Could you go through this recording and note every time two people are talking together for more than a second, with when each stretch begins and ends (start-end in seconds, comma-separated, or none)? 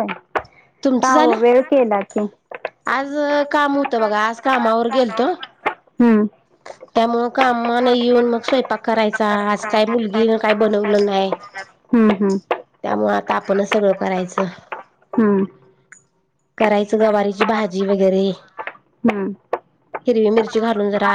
none